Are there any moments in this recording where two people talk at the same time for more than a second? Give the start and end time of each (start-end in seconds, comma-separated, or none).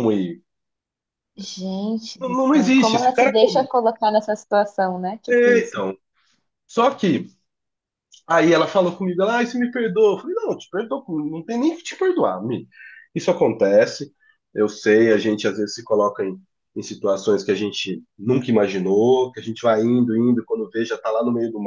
2.2-3.7